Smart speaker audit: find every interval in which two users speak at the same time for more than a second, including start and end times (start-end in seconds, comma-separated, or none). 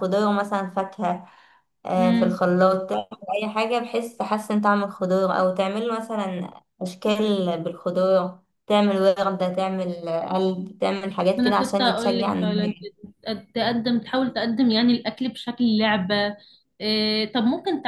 11.4-12.9